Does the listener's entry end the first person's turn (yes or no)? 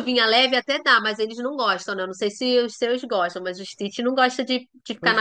yes